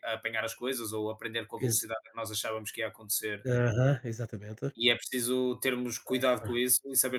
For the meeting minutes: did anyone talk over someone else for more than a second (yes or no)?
no